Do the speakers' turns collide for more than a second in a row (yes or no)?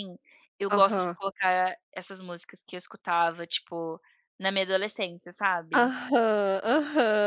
no